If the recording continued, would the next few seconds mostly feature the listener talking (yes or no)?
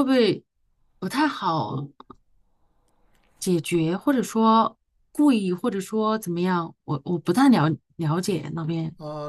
yes